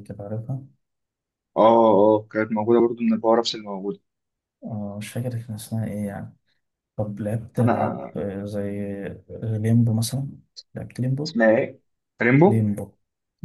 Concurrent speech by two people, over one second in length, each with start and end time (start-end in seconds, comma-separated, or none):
none